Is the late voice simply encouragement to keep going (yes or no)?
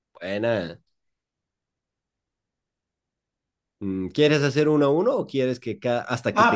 no